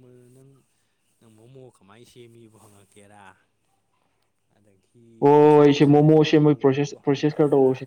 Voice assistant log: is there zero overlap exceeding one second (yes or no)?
no